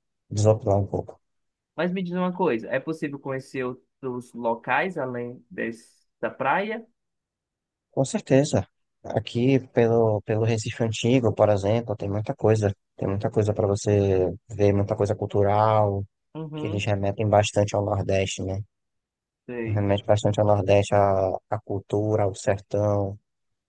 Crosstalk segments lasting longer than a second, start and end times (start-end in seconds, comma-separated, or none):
none